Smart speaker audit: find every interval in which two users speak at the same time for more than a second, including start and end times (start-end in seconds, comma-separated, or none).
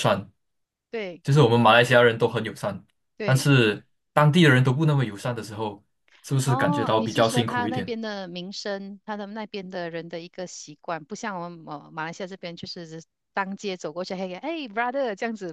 6.4-7.9